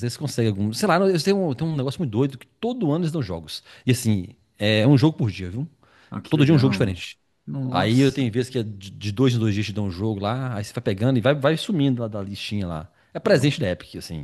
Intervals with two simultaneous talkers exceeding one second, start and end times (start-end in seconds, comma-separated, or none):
none